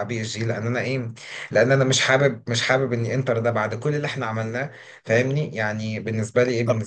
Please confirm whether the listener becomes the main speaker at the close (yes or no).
yes